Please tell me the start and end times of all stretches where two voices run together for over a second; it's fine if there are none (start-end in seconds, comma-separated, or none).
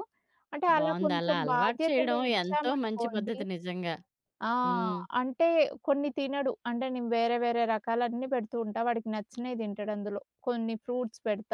0.8-3.4